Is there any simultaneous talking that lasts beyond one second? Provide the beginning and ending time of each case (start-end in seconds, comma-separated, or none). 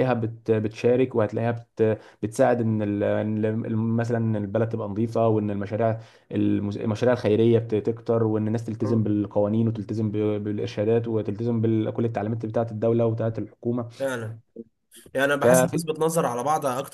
none